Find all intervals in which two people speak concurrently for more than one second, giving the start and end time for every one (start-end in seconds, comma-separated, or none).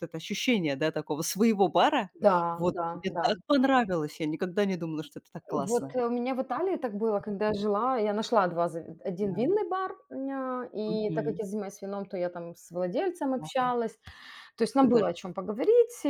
none